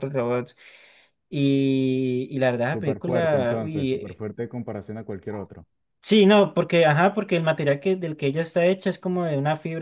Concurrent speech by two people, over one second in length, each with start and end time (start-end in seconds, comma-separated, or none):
2.7-4.2